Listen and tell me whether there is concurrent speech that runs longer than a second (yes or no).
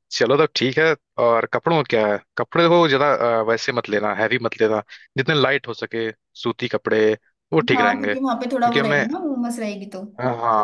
yes